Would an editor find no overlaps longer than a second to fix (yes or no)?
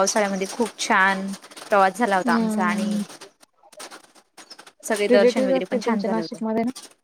no